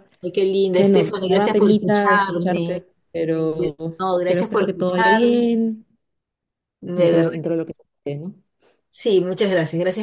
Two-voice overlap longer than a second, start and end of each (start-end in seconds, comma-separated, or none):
0.8-2.8, 4.2-5.5